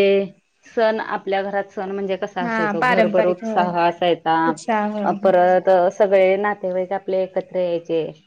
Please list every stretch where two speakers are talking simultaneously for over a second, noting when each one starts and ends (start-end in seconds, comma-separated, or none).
2.4-3.7